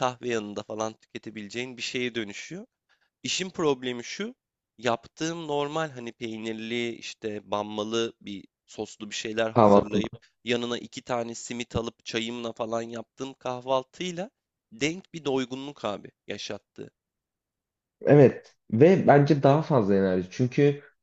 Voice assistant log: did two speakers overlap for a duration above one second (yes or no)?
no